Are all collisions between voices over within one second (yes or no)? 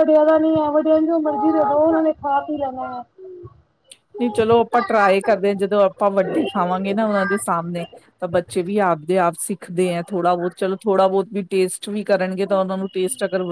yes